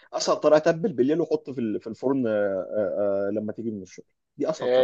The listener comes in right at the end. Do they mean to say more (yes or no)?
yes